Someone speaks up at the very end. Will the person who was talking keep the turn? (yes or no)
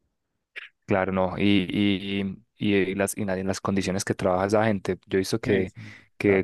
yes